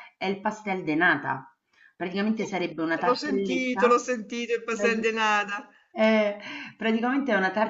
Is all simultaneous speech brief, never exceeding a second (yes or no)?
no